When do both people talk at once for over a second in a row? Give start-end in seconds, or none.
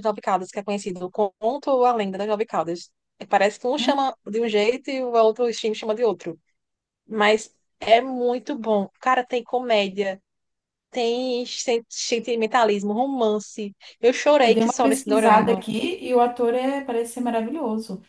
14.4-15.6